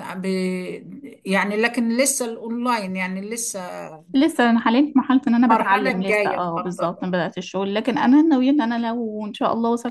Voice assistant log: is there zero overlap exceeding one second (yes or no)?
no